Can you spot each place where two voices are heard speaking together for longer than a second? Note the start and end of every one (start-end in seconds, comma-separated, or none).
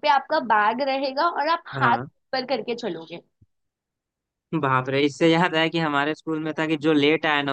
none